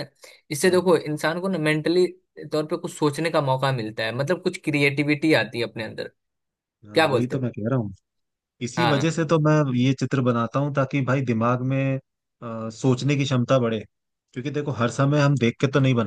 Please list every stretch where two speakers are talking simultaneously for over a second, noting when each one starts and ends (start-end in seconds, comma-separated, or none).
none